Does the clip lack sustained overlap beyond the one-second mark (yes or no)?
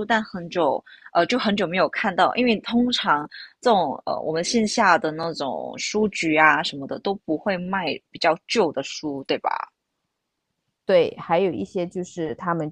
yes